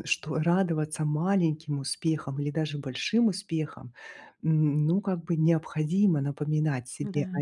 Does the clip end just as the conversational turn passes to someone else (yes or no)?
no